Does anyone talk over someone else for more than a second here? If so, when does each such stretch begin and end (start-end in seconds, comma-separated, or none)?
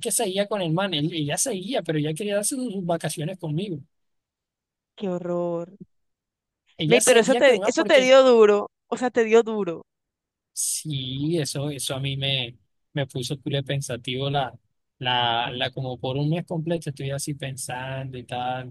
6.9-8.1